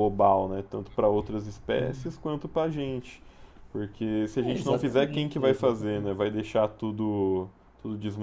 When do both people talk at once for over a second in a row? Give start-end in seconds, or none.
4.4-6.2